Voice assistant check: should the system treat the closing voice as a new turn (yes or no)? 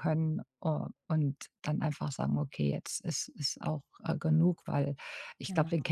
no